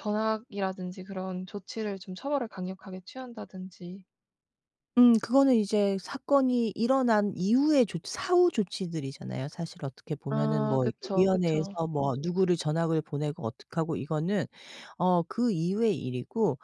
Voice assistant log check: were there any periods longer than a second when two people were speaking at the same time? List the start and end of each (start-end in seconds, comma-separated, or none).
10.3-11.8